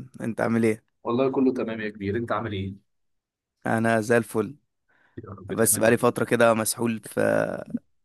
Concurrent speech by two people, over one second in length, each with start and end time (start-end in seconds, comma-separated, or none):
none